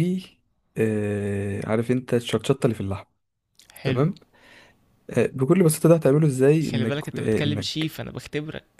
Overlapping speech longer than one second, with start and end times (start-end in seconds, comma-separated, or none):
6.7-7.9